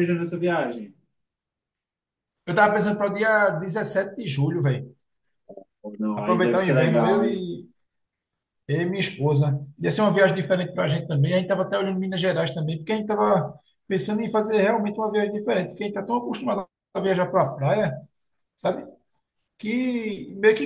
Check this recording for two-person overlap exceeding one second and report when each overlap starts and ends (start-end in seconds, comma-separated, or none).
6.1-7.5